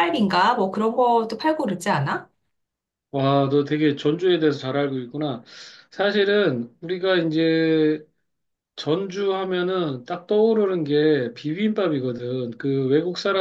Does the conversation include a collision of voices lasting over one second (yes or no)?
no